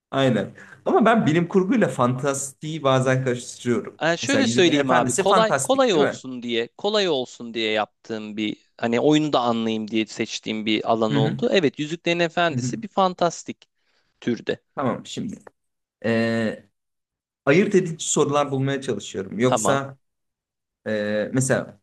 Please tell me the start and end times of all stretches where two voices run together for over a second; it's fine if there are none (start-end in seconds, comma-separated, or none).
4.0-6.2